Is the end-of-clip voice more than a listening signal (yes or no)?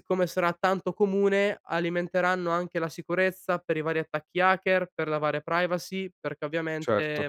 no